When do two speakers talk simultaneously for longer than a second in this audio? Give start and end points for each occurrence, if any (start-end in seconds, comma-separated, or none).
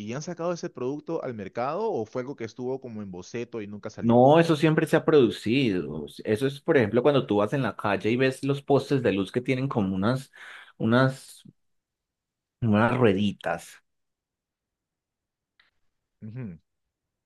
none